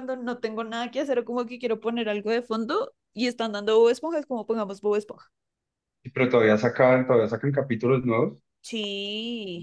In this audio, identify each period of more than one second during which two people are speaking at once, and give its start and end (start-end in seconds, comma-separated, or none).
none